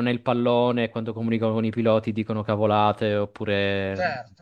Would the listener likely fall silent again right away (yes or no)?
no